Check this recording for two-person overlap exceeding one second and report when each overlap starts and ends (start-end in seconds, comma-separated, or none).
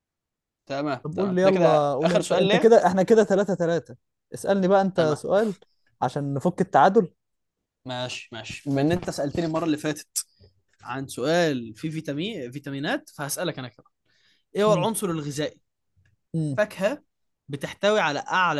1.0-2.7